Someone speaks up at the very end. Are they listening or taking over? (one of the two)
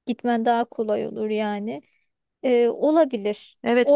taking over